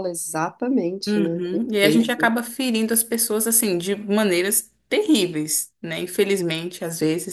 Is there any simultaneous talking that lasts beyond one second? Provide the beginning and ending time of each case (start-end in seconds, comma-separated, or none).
1.1-2.3